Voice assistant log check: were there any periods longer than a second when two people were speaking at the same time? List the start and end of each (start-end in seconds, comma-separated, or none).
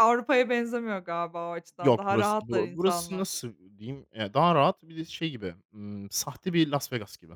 1.8-3.4